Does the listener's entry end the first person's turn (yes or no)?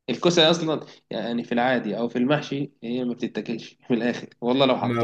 no